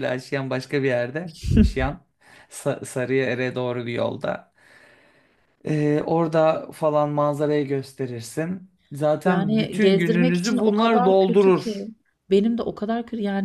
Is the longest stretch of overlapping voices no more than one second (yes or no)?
no